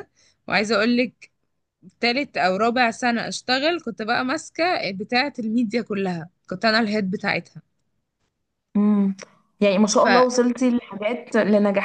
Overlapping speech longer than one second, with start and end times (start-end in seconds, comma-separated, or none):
none